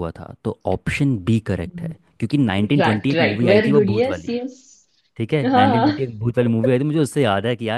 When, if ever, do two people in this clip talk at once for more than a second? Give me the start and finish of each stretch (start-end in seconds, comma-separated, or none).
2.8-4.3